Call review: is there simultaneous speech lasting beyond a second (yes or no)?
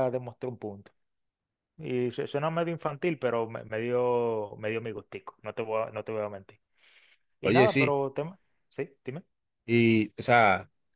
no